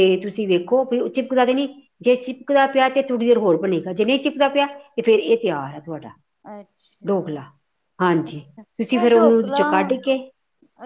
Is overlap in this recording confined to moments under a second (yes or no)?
yes